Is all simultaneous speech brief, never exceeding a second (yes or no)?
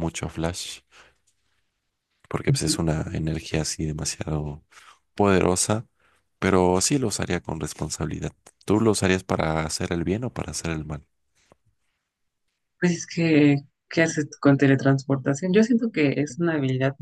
yes